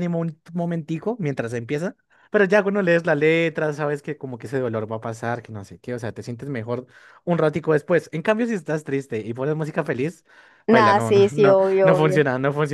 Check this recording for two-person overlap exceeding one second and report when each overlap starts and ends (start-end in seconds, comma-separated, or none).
10.7-12.2